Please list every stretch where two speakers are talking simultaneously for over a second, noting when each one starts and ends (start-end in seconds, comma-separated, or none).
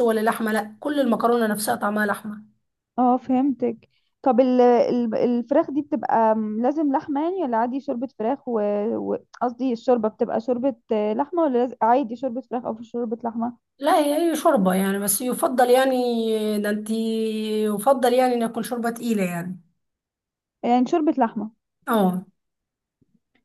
none